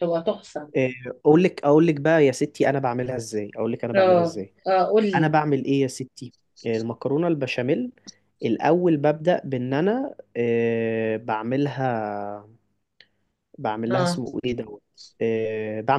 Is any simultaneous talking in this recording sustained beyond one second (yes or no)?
no